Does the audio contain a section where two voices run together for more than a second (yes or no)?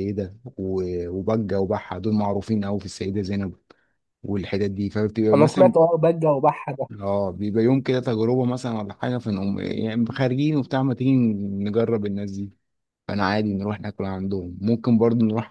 no